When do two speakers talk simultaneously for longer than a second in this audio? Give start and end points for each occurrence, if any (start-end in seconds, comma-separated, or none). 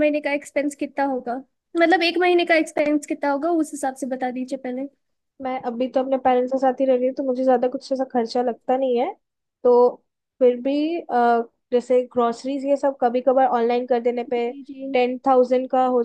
none